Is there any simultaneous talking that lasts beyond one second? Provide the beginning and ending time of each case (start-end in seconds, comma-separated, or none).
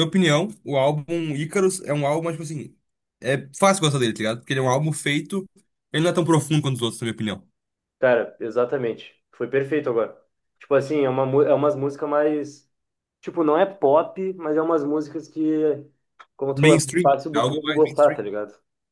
16.5-18.2